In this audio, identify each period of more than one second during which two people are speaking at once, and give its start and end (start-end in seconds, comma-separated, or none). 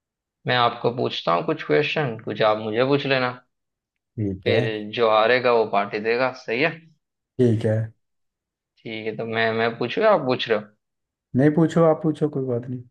none